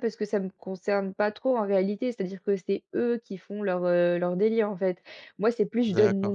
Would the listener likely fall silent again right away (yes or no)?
yes